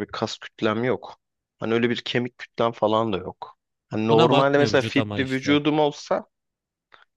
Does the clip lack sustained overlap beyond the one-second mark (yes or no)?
no